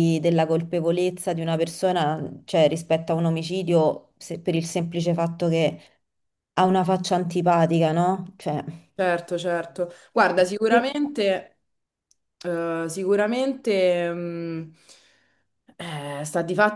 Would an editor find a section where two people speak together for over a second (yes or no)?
no